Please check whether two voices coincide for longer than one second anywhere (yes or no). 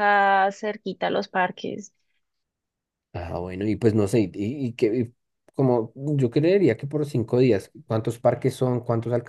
no